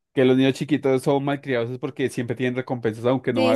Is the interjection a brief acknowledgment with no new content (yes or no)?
no